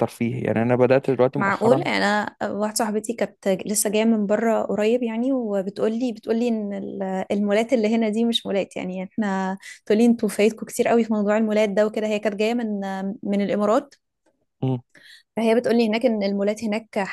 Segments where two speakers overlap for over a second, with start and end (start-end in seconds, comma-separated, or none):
none